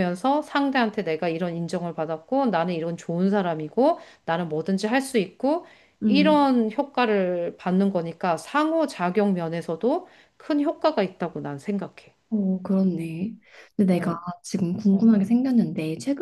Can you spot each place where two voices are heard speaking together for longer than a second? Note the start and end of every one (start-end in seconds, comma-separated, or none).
none